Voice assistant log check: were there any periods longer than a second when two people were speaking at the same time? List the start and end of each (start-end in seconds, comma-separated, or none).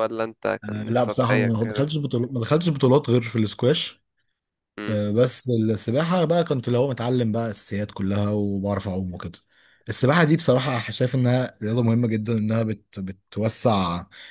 0.6-1.8